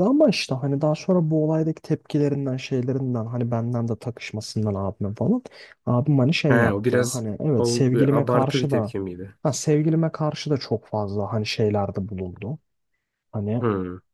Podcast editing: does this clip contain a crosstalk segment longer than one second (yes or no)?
yes